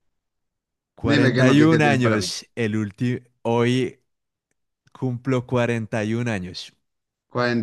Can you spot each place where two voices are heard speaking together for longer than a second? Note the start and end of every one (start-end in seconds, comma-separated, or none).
1.0-2.3